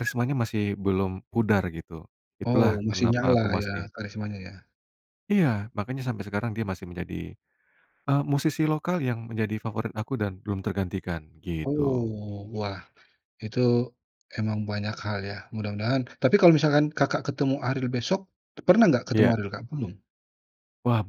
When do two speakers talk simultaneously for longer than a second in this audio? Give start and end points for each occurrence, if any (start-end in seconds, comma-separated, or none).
2.5-3.9